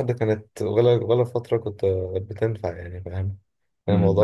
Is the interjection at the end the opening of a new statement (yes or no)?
yes